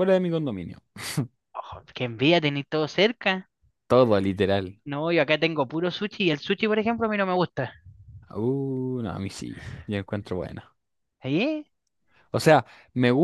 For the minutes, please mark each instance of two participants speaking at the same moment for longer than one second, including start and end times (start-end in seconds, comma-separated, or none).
none